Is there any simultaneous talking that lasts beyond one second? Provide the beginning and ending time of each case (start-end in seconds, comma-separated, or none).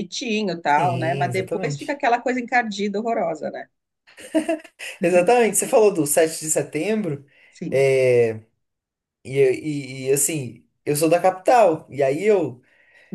0.7-2.0